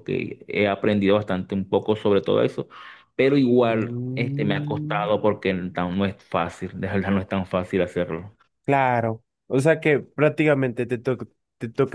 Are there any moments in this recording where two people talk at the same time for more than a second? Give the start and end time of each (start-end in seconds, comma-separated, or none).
3.6-5.1